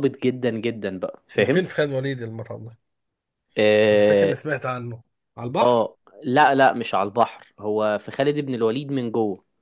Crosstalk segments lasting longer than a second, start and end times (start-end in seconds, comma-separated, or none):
none